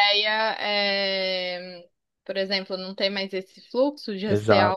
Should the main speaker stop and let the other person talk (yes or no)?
yes